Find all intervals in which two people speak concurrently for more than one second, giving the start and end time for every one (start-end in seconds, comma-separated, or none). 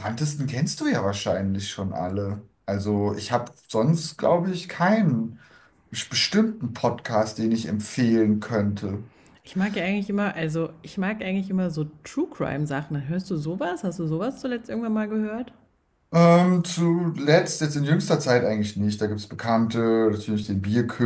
none